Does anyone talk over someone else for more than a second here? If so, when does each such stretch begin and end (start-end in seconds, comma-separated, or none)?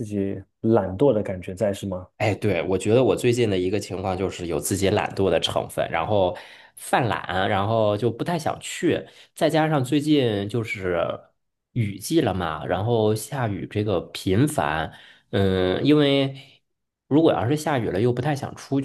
none